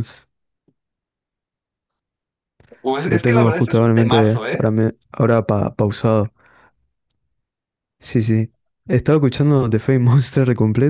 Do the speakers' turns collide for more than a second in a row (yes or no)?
yes